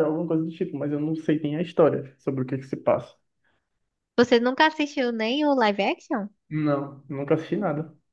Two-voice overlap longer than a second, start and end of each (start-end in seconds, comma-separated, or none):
none